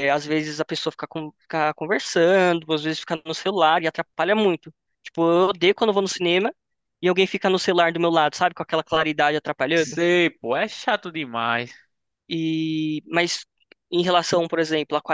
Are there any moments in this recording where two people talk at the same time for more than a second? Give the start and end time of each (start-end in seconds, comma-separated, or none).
none